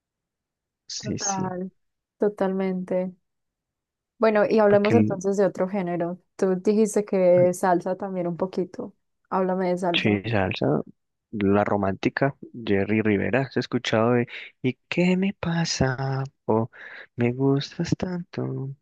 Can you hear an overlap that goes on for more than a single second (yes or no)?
no